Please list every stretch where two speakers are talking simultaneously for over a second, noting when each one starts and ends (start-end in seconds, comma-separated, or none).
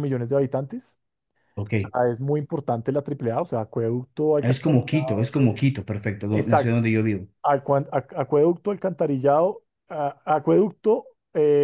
4.4-5.7